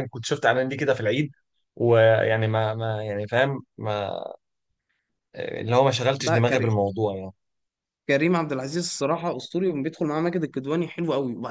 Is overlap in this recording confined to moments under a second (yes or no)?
yes